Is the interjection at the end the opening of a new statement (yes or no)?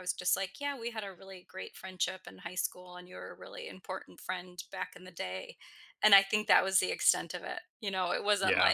no